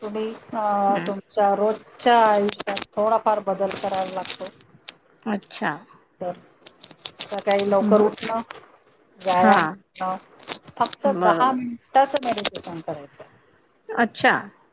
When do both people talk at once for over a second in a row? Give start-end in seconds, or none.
none